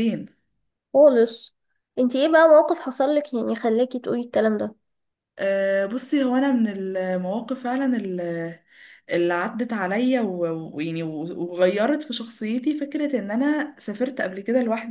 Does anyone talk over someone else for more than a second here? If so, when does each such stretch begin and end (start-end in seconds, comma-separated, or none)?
none